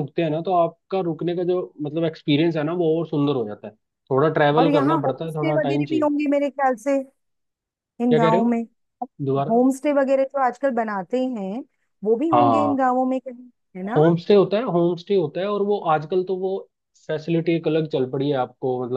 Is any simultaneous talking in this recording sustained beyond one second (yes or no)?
yes